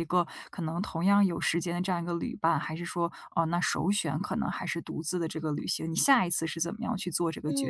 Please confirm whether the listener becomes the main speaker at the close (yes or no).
yes